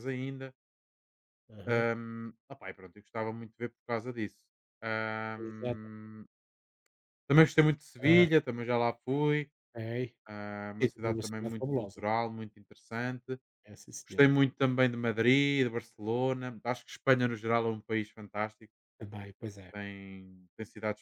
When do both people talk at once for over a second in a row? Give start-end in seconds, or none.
10.8-12.0